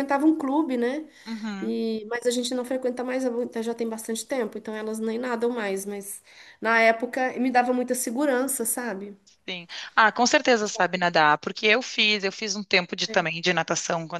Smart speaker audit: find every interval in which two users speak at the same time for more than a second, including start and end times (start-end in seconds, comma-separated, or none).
none